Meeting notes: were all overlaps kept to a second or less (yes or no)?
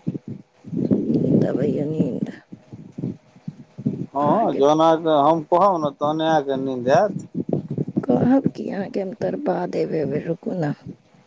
yes